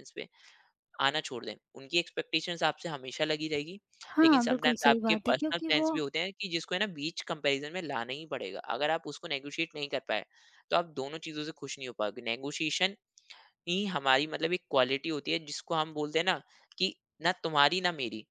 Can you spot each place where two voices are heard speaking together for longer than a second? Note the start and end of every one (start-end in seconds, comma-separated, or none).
4.2-5.9